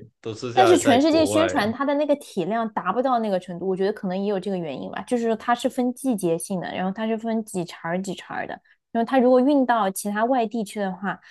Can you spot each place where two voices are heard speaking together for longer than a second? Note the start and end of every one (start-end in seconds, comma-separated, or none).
0.5-1.8